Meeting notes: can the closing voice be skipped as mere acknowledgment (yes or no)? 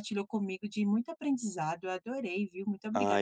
no